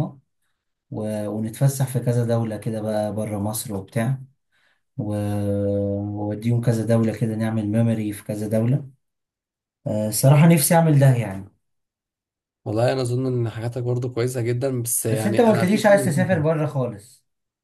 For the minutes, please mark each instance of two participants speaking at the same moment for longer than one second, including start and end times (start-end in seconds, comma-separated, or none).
15.1-16.5